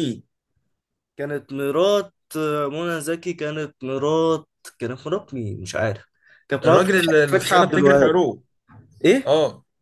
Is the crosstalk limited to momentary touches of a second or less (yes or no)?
no